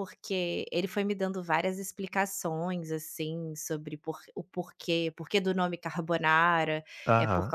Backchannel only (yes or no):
yes